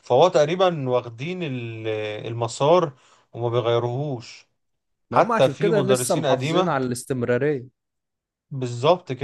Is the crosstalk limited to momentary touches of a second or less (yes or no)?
no